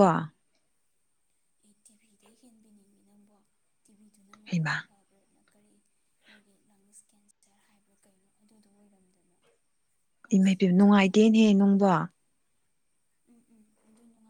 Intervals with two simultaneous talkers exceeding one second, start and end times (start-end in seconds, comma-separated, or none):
10.3-11.8